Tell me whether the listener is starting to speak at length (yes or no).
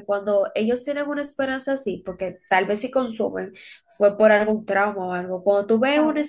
no